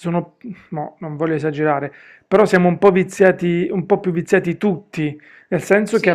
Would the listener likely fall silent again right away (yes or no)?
yes